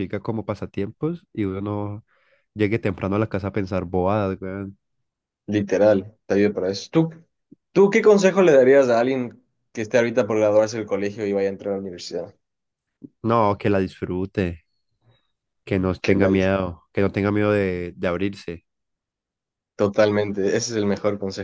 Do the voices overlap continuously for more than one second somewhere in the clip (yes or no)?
no